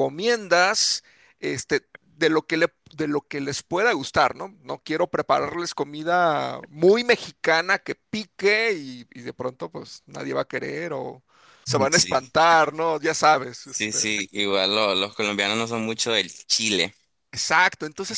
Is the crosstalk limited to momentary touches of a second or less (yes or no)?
yes